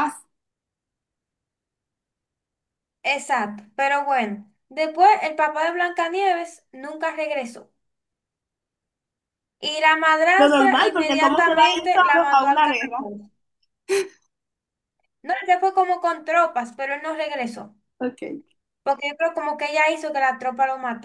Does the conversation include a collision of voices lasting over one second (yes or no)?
yes